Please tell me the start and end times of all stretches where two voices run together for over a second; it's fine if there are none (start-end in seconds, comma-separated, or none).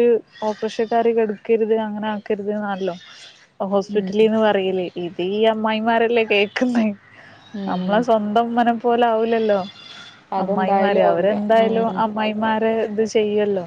10.4-12.0